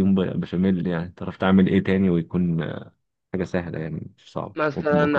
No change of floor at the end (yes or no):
no